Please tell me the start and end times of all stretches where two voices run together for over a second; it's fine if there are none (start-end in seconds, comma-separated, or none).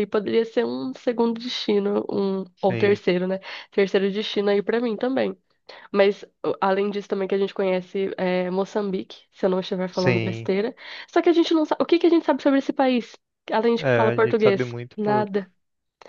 13.8-15.3